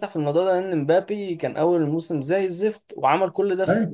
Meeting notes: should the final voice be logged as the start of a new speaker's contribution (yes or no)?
no